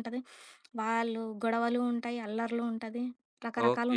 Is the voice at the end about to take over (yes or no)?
yes